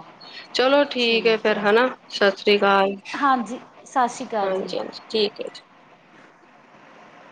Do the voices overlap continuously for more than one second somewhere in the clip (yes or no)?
no